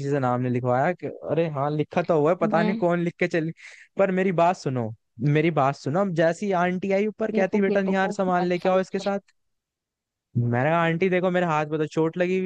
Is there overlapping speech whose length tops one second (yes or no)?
yes